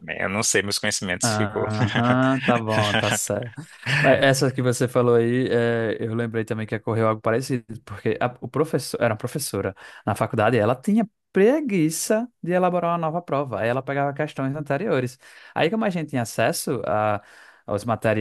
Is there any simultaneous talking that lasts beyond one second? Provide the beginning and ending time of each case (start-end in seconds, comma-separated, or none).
none